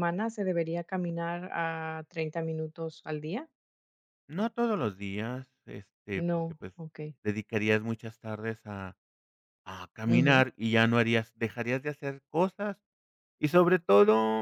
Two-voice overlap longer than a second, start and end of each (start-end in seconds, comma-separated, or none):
none